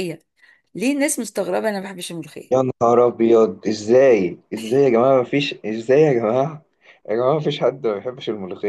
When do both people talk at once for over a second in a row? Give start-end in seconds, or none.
none